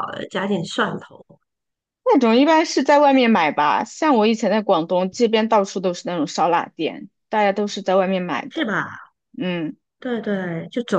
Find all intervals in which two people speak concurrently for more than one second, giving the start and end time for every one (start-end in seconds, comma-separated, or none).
none